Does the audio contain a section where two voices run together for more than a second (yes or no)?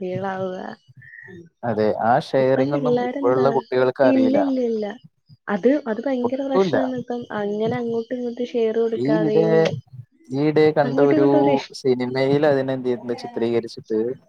no